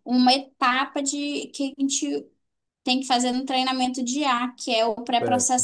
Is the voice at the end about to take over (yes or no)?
no